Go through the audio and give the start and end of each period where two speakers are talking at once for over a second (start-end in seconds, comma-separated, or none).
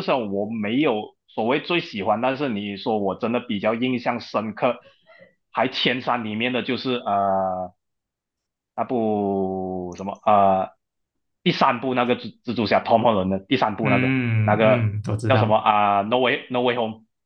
13.8-15.7